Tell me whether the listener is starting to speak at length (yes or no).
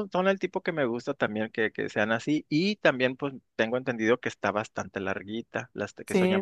yes